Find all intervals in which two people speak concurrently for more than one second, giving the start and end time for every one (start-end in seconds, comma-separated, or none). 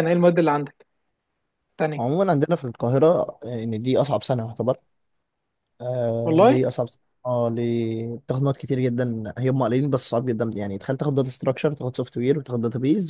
none